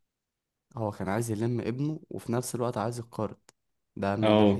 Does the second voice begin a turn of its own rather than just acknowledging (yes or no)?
yes